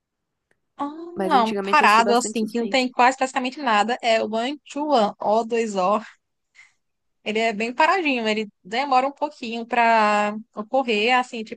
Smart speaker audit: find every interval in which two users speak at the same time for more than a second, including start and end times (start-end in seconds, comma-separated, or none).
1.1-2.9